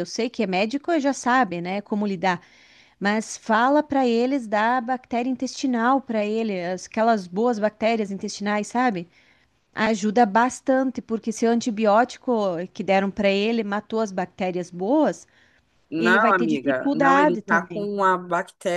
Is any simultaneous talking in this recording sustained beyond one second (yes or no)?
yes